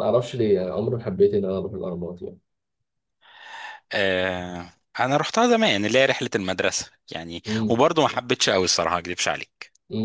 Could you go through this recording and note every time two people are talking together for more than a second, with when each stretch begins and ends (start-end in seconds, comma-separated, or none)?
none